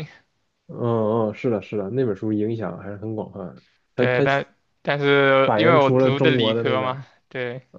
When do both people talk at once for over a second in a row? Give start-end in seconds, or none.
5.4-7.0